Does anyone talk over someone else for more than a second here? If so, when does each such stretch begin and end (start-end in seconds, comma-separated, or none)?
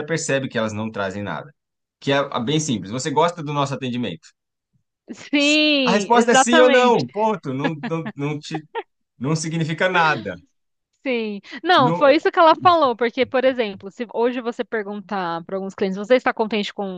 5.8-7.0